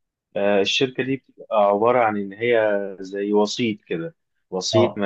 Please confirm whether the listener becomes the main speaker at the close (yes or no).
no